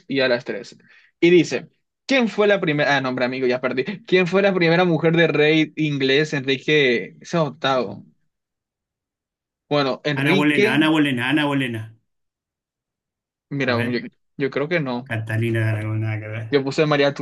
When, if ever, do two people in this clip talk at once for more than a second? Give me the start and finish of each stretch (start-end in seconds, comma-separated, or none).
none